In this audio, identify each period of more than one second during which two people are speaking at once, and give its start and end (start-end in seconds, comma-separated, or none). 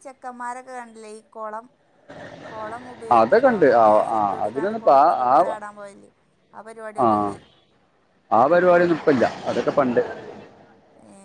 3.2-5.6